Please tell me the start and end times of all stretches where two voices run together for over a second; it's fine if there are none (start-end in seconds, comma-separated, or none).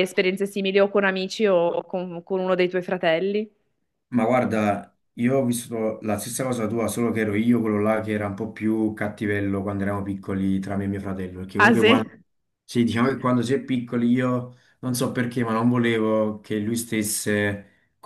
none